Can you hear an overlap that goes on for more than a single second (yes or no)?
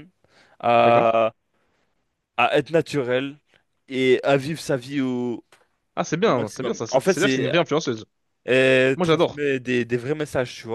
yes